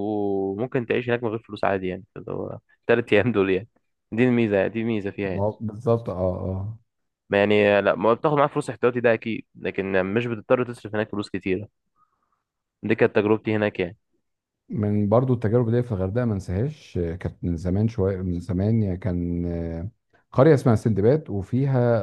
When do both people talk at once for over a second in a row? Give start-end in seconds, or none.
none